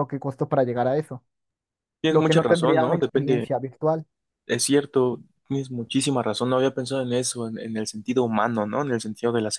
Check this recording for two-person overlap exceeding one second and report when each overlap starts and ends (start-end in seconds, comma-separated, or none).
2.1-3.5